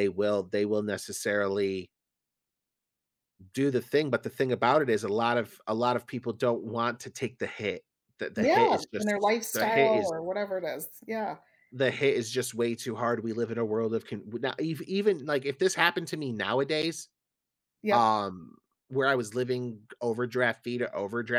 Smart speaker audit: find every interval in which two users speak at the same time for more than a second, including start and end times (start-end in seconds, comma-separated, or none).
8.4-10.1